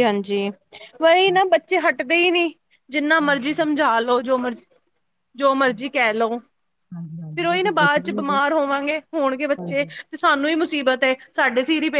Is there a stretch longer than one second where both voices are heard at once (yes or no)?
yes